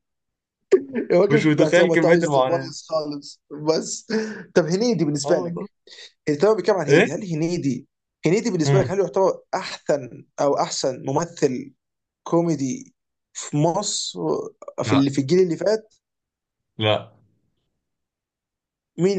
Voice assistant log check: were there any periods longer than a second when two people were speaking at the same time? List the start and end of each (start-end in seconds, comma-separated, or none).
1.3-2.7